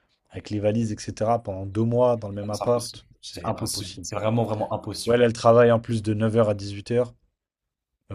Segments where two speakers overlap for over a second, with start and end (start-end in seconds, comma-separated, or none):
2.5-4.1